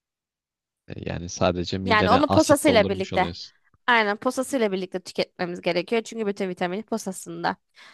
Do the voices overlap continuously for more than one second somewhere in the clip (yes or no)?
yes